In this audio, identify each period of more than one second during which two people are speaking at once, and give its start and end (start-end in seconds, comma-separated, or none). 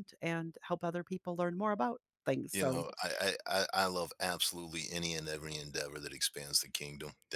none